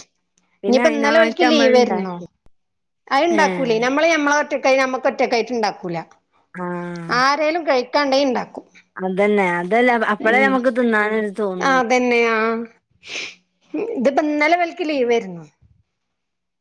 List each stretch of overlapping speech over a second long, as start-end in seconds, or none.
0.7-2.1